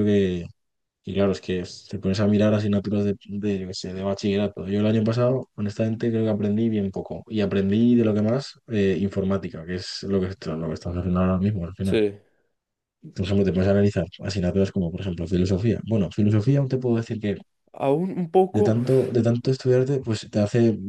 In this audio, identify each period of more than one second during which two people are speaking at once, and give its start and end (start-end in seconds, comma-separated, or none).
none